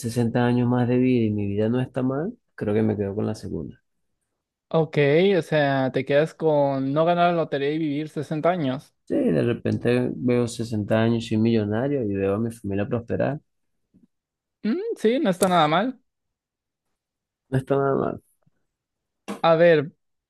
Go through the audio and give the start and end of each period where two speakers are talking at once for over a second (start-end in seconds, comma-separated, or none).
none